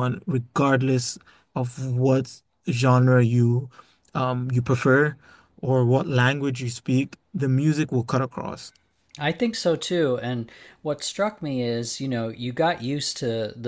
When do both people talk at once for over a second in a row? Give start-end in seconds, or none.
none